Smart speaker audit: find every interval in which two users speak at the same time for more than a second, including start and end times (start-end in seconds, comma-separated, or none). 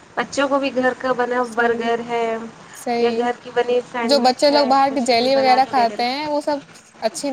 4.1-6.0